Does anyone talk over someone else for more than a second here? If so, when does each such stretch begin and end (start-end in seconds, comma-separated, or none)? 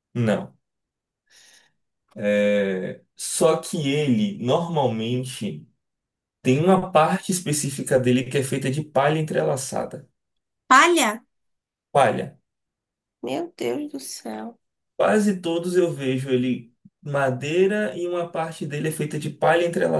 none